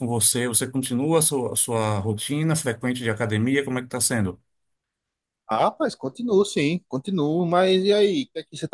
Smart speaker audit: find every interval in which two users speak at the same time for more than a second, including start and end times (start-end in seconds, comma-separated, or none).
none